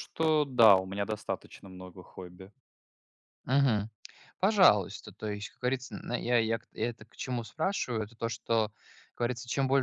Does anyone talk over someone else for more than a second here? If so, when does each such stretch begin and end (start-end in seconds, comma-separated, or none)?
none